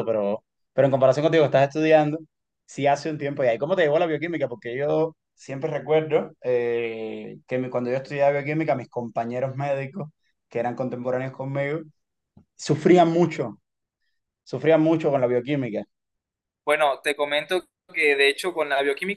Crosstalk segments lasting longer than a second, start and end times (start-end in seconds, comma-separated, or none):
none